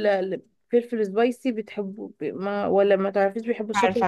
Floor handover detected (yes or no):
yes